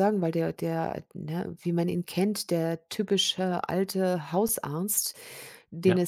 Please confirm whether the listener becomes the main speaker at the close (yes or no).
no